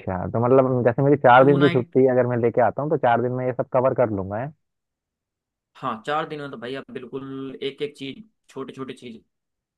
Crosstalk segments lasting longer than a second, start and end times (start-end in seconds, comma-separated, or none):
none